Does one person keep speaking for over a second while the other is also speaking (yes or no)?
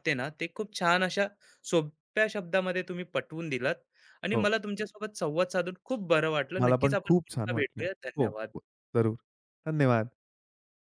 yes